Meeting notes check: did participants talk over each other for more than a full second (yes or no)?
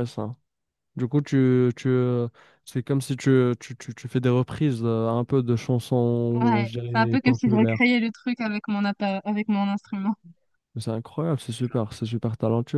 yes